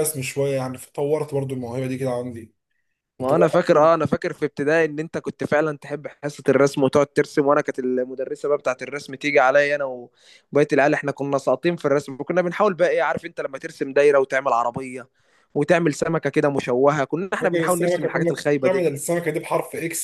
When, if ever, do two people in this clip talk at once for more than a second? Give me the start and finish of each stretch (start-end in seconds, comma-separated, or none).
17.4-18.9